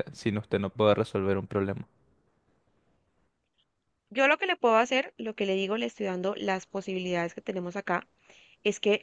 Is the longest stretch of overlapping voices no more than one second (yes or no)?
yes